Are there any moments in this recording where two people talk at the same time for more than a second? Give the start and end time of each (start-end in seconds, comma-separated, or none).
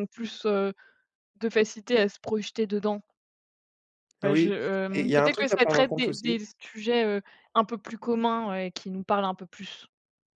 4.2-6.3